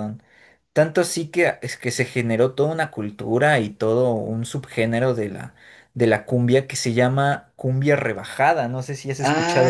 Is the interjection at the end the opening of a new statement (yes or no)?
yes